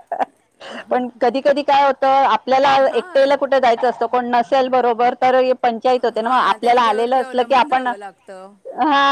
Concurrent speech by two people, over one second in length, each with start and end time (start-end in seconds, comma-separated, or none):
6.2-7.9